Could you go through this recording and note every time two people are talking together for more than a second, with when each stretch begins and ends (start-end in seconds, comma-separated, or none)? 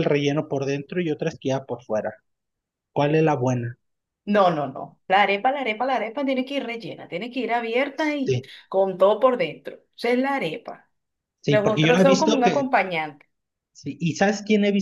11.5-12.7